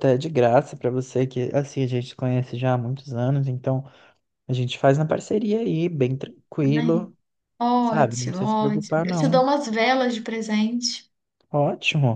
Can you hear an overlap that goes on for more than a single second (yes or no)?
yes